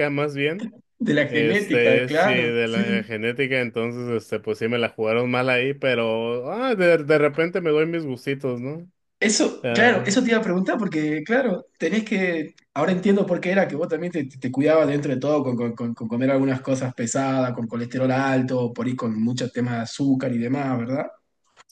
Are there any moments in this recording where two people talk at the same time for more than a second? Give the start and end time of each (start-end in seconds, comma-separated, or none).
1.3-2.8